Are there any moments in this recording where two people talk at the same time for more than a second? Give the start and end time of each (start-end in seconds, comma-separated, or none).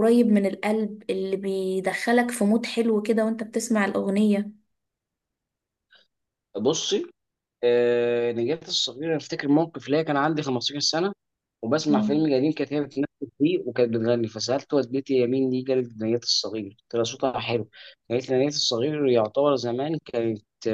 none